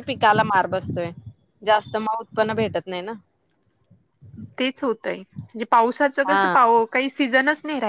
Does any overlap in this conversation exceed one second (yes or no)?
no